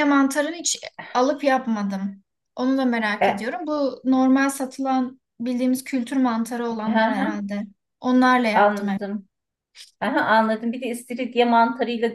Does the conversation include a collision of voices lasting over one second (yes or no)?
no